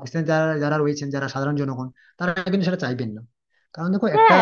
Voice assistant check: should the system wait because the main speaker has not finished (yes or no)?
no